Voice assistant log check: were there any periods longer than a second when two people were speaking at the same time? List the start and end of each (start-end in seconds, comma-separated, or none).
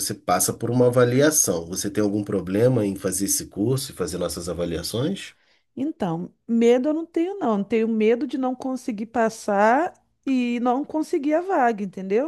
none